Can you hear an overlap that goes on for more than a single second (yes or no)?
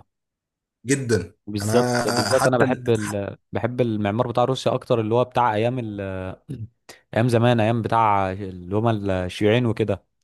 yes